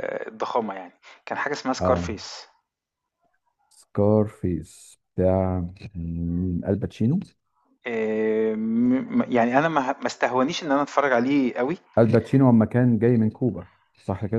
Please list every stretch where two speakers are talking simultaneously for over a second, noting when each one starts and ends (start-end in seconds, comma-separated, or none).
none